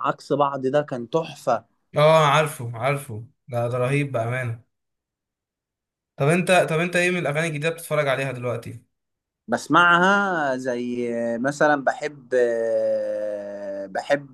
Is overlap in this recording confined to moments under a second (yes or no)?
yes